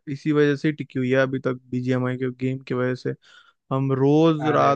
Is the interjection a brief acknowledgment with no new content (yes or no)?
yes